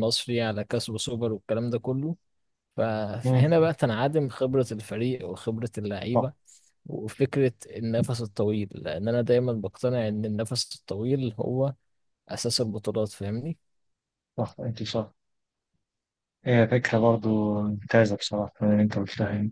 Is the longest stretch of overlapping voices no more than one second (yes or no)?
yes